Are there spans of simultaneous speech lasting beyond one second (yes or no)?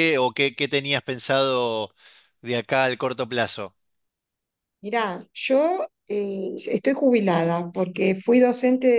no